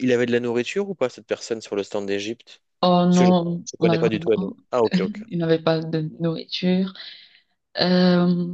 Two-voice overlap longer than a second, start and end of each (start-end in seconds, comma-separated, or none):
3.1-4.6